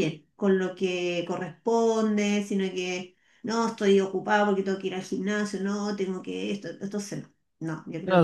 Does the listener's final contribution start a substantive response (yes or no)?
yes